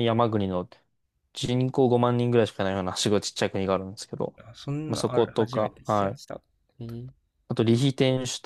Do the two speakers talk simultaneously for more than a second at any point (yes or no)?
yes